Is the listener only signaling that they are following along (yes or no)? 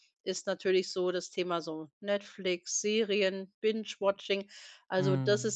yes